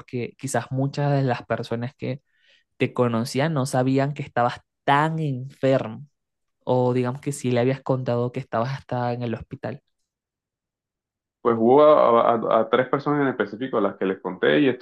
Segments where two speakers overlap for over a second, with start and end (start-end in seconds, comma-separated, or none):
none